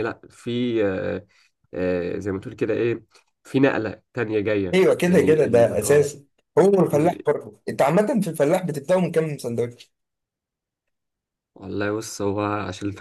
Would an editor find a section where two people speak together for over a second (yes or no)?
yes